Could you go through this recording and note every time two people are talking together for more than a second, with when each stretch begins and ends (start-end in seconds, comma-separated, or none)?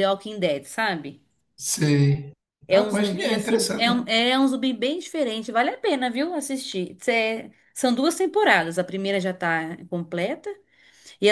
2.7-4.0